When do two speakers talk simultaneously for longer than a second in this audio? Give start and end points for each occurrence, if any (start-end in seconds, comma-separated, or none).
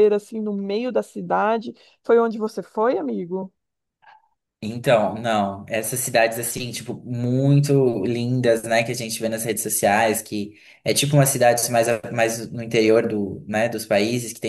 none